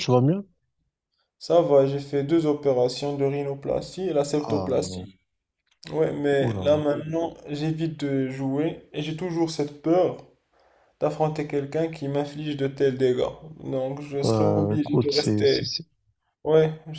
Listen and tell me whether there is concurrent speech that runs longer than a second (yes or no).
yes